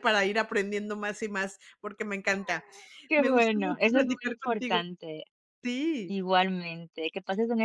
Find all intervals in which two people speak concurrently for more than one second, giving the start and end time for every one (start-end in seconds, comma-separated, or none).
3.1-4.8